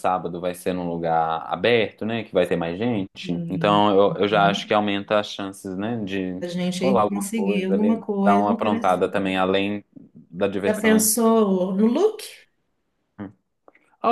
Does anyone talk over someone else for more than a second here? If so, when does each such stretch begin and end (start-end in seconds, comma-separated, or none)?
6.4-9.0